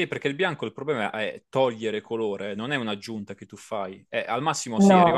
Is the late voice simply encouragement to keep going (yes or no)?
yes